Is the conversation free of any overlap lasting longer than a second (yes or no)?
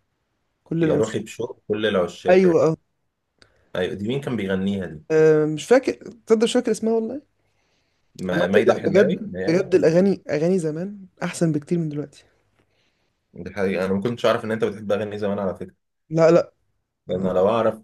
no